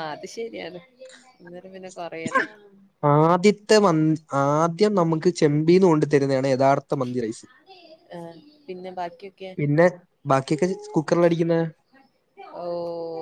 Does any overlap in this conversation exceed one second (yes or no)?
no